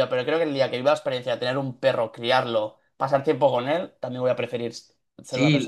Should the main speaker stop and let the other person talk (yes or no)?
yes